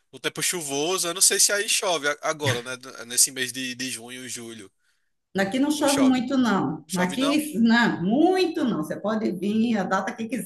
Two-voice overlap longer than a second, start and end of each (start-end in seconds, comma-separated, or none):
none